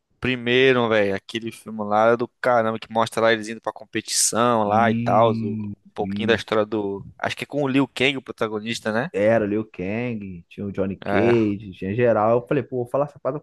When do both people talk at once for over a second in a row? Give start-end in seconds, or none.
4.6-6.4